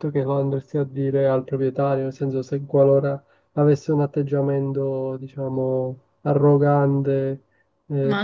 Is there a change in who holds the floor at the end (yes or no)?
yes